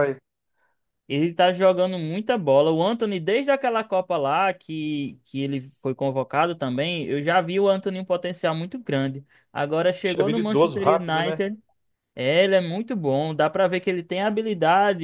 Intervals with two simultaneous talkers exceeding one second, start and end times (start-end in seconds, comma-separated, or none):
10.0-11.5